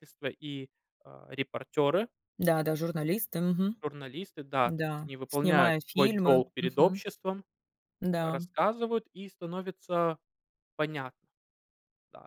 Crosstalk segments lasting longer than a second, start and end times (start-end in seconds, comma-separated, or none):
4.6-7.0